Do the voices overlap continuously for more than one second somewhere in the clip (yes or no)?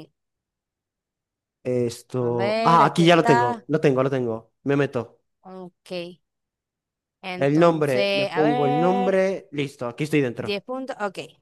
yes